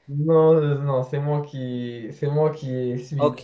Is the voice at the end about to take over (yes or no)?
yes